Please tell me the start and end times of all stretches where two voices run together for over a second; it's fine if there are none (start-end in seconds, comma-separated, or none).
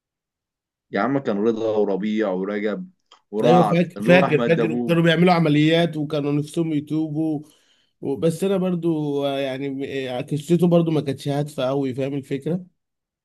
3.4-5.0